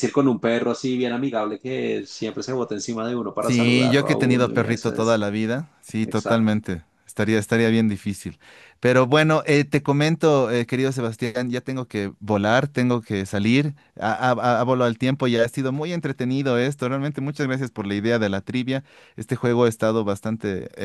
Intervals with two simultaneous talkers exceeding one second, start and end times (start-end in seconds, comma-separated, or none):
3.4-5.2